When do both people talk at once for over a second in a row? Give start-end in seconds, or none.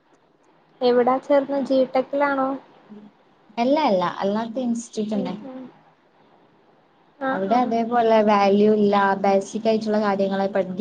none